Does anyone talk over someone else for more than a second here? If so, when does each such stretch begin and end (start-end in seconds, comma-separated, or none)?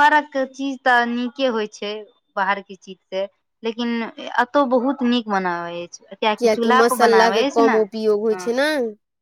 6.8-8.5